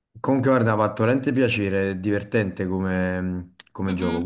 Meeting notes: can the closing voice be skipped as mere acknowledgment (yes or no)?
yes